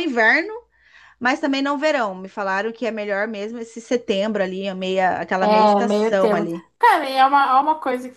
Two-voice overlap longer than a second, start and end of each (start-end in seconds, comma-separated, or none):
5.4-6.7